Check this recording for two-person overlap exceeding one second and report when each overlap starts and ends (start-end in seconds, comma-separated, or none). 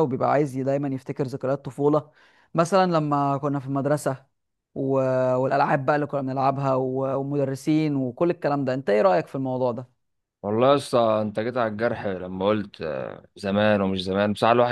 none